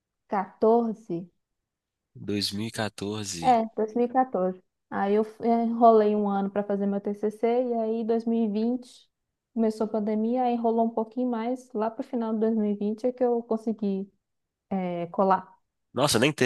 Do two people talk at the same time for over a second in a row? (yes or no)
no